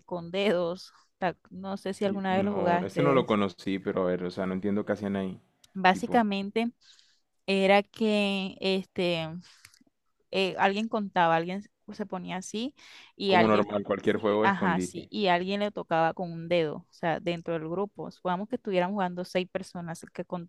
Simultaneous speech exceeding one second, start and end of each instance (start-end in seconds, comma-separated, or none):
2.0-3.2, 13.3-15.1